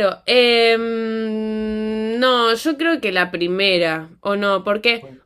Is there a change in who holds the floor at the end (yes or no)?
no